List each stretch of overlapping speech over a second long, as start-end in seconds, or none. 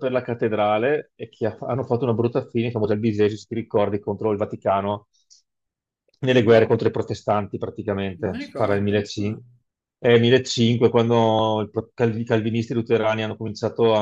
8.2-9.4